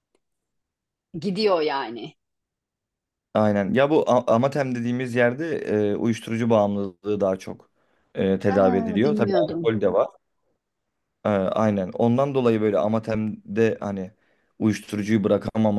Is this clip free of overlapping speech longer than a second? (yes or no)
no